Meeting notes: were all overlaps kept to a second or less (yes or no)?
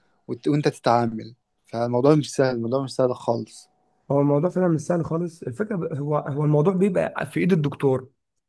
yes